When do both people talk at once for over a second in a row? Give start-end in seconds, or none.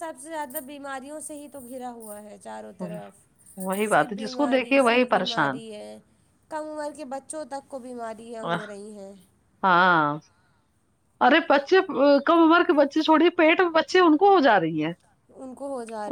3.7-5.6